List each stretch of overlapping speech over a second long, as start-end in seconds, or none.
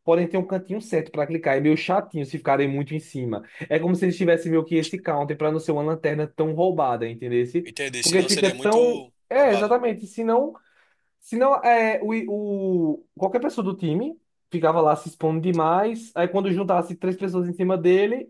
7.6-9.8